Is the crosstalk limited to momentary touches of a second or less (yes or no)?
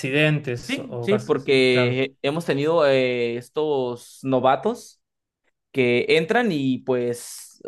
no